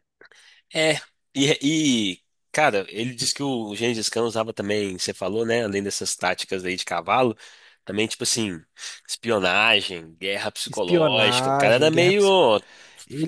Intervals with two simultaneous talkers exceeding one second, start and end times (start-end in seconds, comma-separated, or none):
10.7-12.2